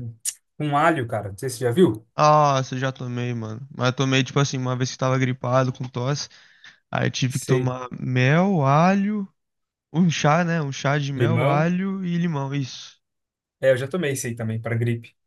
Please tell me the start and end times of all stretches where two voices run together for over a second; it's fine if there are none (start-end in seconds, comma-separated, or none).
none